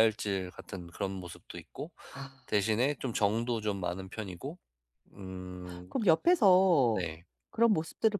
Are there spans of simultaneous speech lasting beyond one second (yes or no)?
no